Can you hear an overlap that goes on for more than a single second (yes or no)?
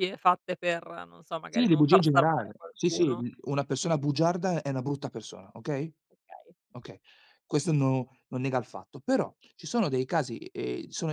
yes